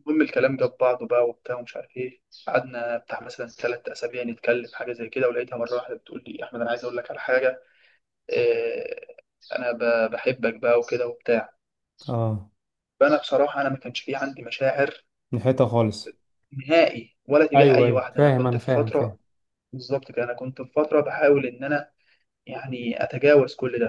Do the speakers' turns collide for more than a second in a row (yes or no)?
yes